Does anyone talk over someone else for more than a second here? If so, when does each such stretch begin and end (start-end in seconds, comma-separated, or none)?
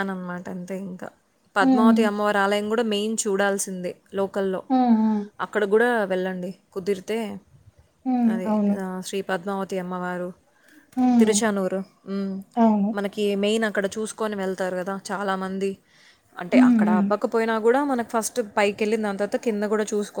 none